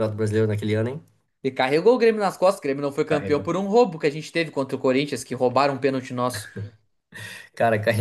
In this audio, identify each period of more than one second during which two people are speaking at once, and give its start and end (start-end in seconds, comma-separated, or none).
none